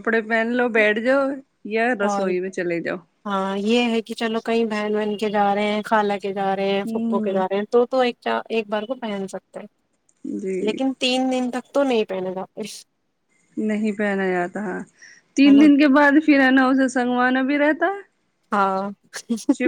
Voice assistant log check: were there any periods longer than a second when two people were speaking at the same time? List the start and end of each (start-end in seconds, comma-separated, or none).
none